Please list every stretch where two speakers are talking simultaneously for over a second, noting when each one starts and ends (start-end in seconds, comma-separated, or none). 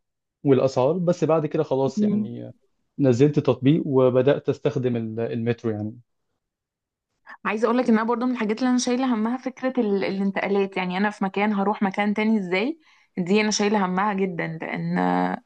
none